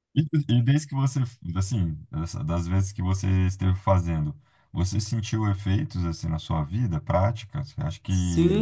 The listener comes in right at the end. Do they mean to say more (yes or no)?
yes